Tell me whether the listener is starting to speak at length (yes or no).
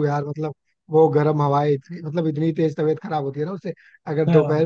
no